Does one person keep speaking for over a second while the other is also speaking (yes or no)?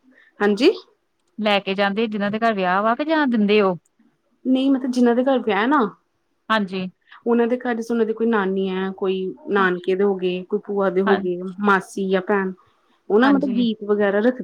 no